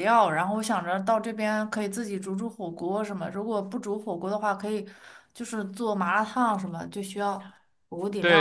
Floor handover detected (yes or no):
yes